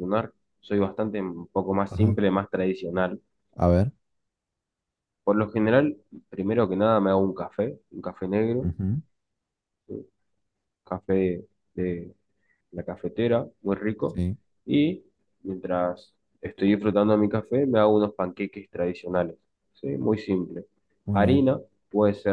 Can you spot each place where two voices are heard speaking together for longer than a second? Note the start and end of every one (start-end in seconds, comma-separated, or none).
none